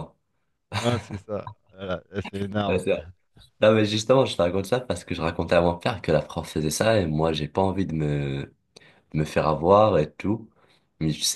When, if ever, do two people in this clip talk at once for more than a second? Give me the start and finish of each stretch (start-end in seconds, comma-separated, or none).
none